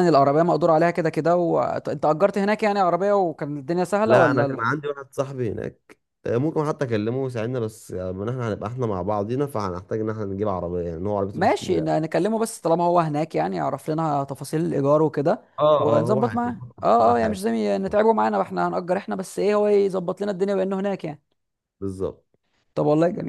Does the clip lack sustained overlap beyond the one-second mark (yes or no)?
no